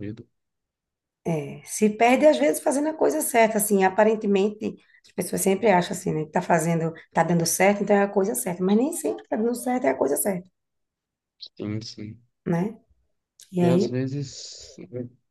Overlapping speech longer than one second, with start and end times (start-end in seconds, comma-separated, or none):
none